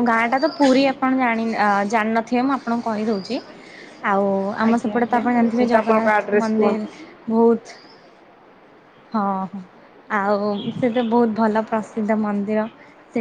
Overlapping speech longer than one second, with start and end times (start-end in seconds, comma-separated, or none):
4.7-6.8